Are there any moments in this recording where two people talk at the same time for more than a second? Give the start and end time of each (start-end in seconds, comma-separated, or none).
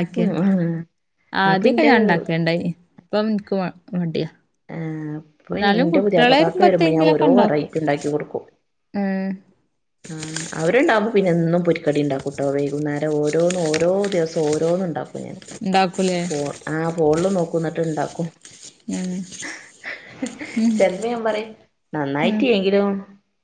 5.5-7.7